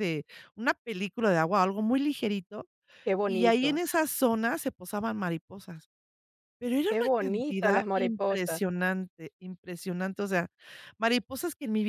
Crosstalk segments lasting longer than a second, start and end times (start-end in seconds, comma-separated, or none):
6.9-8.6